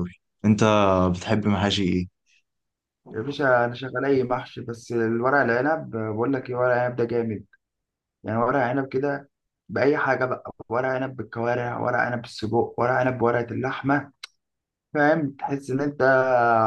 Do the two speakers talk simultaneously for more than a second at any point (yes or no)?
no